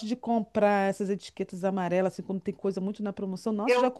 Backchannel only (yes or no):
yes